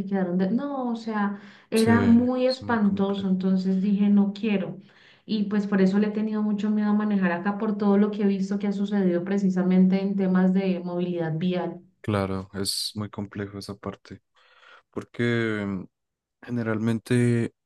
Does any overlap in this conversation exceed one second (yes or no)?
yes